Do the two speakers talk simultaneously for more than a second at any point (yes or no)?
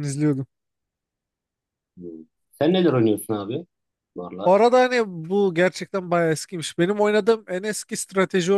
no